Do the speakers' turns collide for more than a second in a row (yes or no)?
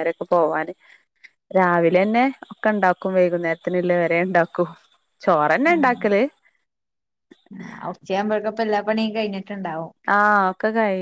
no